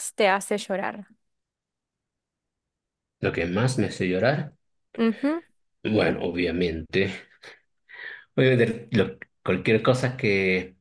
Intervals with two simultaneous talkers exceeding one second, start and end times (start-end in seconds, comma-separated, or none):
none